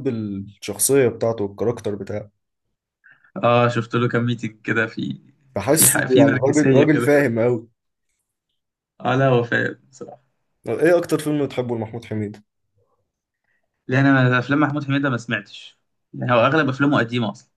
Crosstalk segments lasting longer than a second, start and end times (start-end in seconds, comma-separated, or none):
5.7-7.2